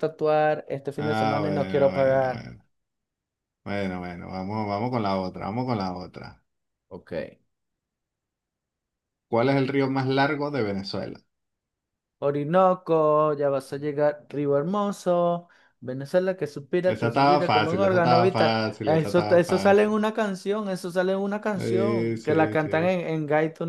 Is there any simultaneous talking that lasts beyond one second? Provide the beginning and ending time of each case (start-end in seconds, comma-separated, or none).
1.0-2.5, 16.8-20.0, 21.5-23.0